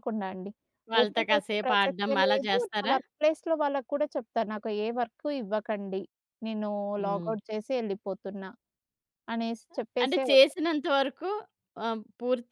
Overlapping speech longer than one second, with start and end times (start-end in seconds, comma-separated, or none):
1.0-2.9